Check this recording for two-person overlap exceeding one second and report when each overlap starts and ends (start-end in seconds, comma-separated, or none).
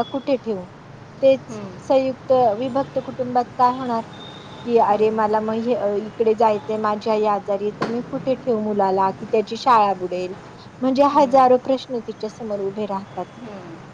none